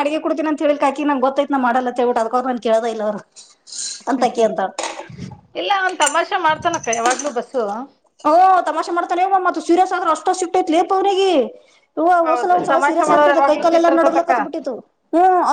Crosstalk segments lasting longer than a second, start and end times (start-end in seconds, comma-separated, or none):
12.3-14.3